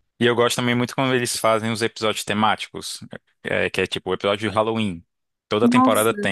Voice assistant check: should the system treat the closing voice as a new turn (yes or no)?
no